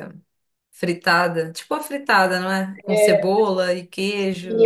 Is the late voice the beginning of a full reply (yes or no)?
yes